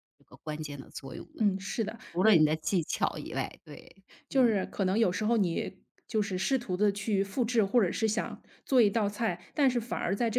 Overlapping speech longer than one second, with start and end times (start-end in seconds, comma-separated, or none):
none